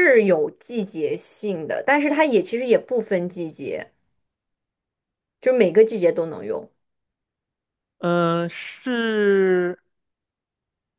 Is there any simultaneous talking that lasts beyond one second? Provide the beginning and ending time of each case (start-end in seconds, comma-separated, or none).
none